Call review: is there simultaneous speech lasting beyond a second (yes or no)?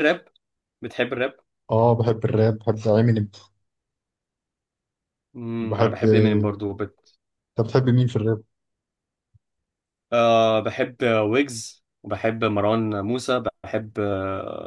no